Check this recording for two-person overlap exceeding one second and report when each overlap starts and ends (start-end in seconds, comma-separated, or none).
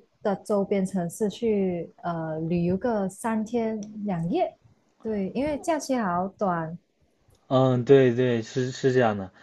none